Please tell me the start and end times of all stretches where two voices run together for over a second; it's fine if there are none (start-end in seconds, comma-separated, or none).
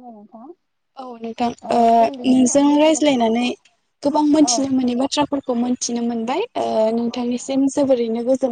2.0-3.4